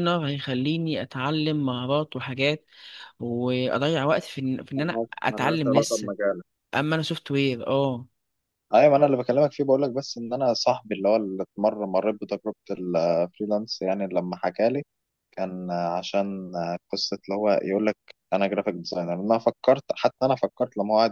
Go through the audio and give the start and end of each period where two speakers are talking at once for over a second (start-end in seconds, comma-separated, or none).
4.8-6.1